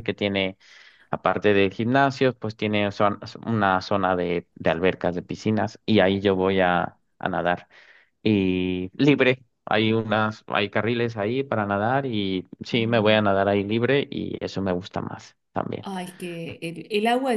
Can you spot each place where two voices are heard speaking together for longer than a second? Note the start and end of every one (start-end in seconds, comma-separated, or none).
none